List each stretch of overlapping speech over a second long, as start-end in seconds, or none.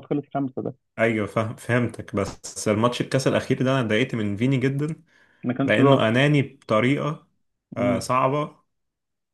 none